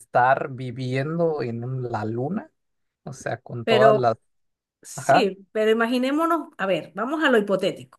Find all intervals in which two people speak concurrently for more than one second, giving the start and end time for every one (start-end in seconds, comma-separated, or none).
none